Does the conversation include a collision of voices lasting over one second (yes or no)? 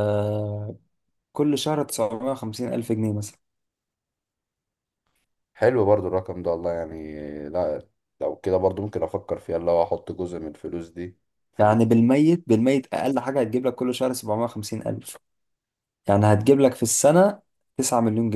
no